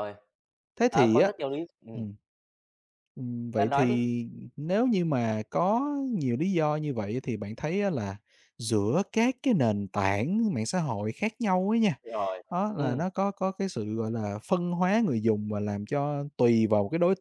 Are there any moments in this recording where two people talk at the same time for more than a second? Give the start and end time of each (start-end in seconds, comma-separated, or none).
none